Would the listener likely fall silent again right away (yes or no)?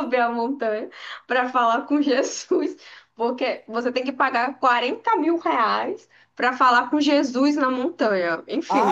no